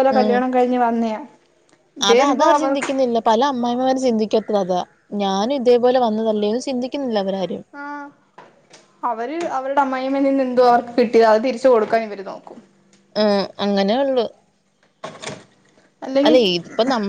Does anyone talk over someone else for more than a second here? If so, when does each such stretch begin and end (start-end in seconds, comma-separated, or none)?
none